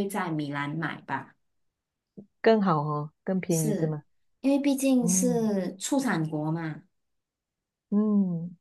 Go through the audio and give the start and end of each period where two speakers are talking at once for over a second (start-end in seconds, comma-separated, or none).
none